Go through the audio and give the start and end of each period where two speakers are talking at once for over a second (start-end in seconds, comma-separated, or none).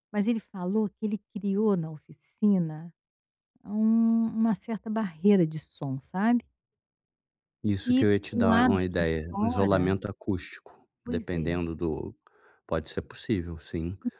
7.8-10.0